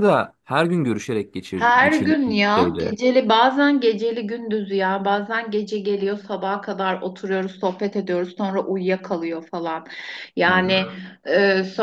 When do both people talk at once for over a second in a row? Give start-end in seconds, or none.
1.5-2.9